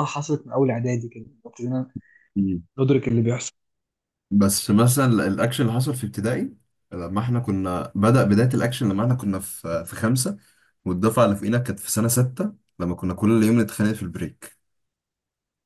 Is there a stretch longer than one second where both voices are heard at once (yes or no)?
no